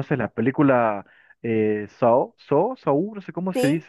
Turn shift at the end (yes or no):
yes